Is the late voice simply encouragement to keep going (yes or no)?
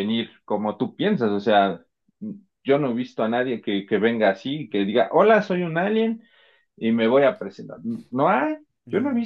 no